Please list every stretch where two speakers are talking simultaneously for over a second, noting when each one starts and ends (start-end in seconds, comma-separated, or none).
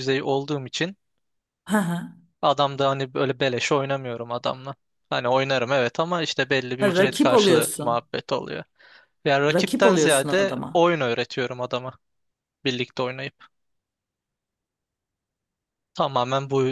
6.8-8.0, 9.5-10.9